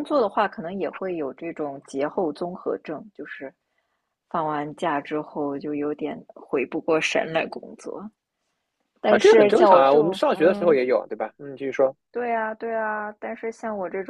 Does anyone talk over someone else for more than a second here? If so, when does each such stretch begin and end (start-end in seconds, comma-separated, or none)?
9.1-10.8